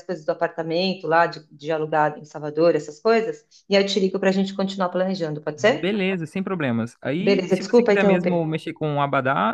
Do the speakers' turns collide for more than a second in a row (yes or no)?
yes